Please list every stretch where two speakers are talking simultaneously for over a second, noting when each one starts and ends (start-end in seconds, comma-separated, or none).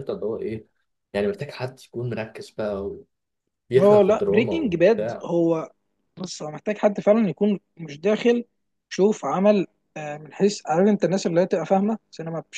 3.8-5.3